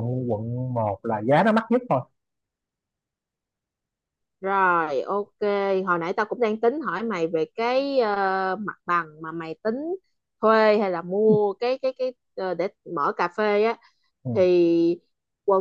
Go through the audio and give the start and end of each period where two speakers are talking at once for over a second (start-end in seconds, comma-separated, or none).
none